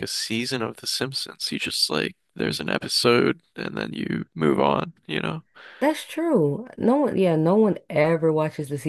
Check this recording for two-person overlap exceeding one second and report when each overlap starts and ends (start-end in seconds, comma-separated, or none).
none